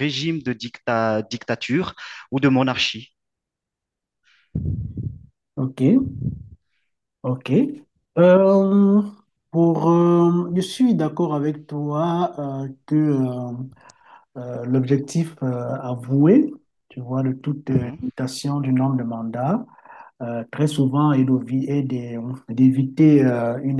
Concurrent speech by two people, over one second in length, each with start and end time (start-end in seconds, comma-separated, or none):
none